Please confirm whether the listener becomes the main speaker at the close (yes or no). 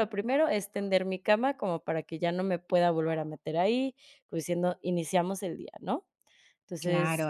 yes